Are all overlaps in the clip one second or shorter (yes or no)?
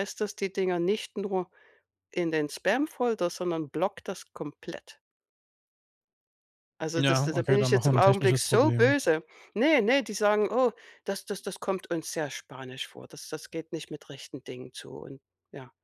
no